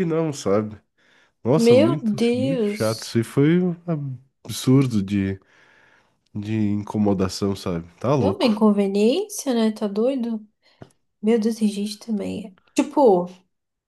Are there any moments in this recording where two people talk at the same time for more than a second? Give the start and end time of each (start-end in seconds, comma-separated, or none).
1.6-3.2